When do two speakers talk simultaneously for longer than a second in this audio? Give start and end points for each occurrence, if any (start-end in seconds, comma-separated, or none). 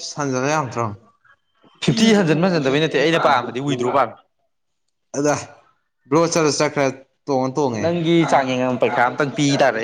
1.9-4.0